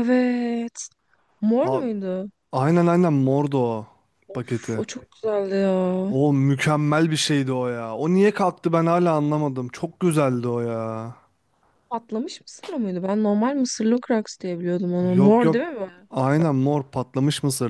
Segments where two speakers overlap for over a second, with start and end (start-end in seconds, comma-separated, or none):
none